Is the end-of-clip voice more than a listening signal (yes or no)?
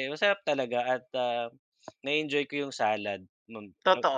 yes